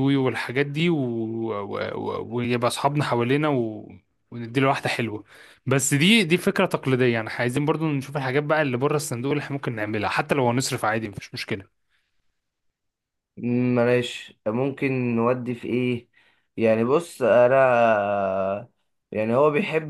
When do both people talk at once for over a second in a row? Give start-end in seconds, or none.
none